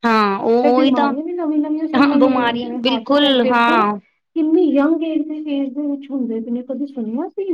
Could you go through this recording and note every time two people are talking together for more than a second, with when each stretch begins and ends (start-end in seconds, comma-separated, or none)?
1.9-3.9